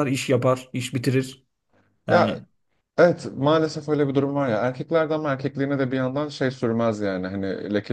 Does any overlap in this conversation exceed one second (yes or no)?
no